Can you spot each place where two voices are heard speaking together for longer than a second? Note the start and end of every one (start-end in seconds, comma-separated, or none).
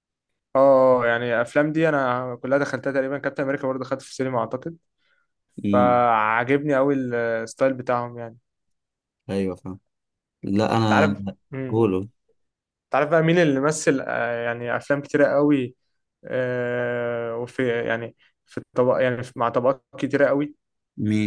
none